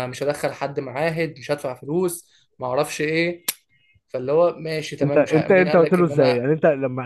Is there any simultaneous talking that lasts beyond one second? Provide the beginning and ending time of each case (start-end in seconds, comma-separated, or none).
5.0-6.4